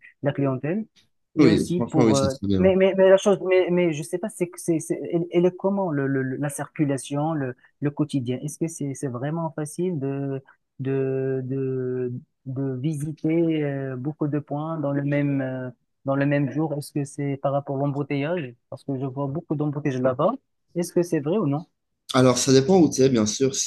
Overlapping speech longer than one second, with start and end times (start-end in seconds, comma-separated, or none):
1.4-2.7